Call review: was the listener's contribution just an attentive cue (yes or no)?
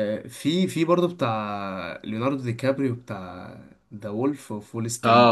no